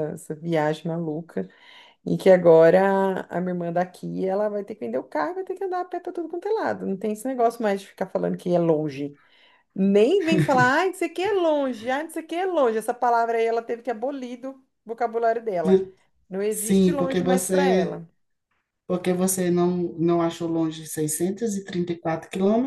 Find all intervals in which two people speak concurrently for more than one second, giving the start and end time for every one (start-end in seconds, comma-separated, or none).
16.5-18.0